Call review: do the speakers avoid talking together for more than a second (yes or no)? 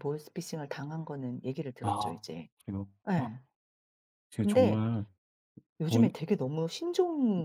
yes